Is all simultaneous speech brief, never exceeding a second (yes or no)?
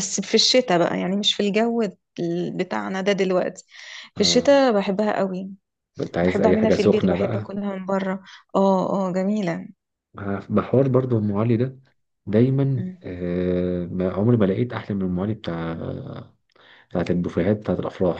no